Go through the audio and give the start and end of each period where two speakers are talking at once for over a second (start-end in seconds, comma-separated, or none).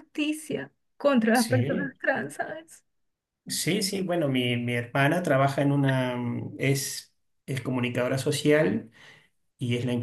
none